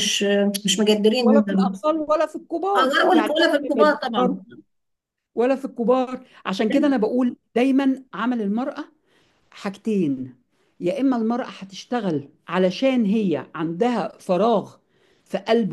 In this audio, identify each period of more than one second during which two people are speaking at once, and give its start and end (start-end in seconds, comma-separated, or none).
2.8-4.4